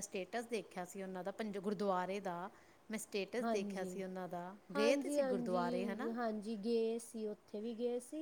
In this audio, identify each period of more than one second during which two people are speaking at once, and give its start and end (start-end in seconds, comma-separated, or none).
none